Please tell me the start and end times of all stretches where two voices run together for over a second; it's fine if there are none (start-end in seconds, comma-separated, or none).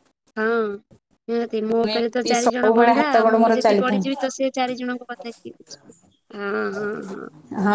1.8-4.0